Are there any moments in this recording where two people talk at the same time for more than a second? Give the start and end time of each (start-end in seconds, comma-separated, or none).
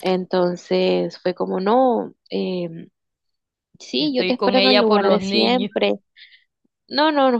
4.0-5.7